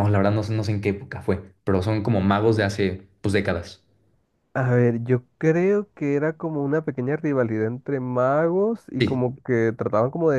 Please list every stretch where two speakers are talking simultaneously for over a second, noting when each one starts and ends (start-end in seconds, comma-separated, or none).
none